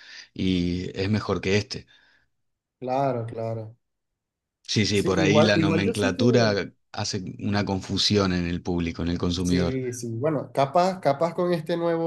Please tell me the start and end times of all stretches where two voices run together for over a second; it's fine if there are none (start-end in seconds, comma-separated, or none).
4.9-6.2